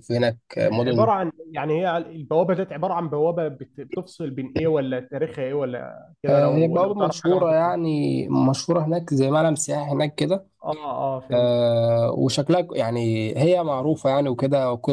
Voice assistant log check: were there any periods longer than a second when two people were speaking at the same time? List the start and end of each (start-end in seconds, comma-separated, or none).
6.3-7.7